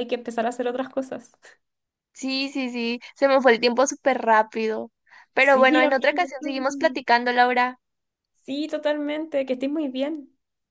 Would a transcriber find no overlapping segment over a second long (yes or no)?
no